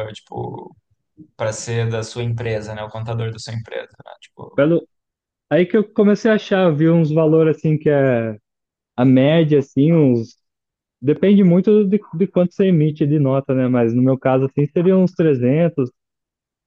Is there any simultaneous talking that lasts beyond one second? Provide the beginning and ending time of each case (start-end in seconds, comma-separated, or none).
none